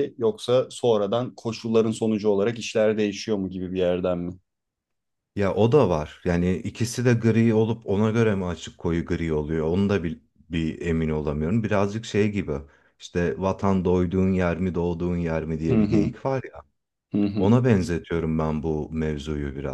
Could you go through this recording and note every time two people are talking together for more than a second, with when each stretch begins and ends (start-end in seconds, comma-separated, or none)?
none